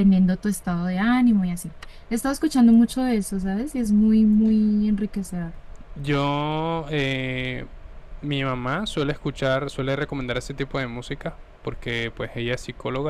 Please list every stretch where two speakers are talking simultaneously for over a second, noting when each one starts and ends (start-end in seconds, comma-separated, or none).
none